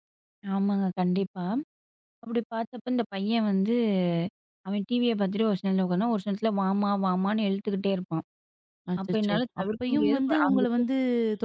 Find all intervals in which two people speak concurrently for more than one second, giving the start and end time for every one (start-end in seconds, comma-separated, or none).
9.0-10.9